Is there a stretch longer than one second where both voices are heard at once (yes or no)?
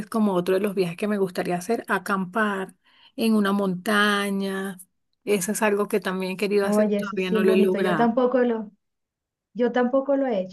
yes